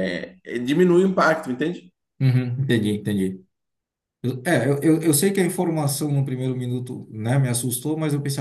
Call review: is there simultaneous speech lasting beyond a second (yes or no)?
no